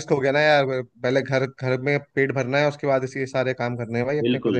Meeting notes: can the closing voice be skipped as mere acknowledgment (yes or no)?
yes